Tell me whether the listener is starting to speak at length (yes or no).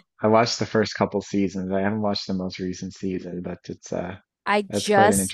yes